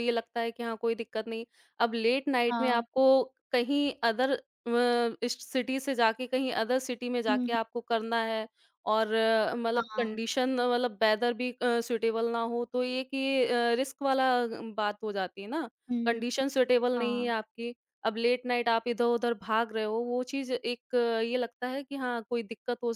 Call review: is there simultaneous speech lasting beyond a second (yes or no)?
no